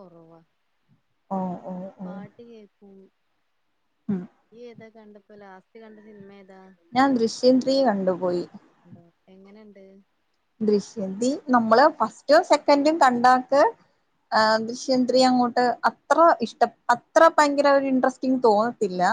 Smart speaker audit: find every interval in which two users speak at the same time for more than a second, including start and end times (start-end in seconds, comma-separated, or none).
none